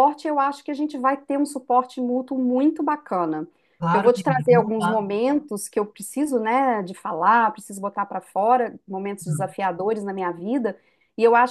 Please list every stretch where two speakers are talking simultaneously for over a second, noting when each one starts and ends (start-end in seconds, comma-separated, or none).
3.8-5.0